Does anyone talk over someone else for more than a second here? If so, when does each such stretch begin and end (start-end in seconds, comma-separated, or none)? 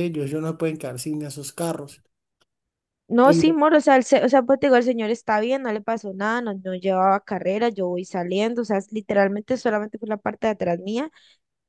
none